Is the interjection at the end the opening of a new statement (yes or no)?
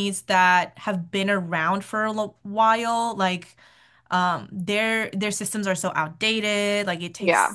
no